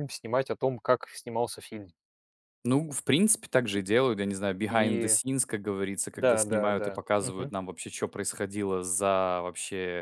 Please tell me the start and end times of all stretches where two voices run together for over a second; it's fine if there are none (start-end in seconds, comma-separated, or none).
6.1-7.5